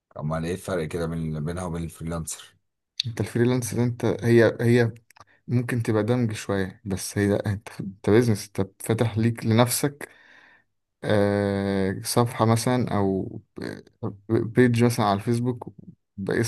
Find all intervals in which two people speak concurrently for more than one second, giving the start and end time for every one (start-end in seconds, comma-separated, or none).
none